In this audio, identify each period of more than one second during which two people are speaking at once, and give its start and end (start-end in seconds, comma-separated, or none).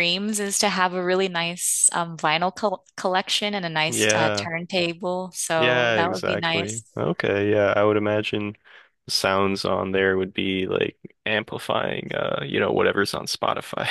5.5-6.8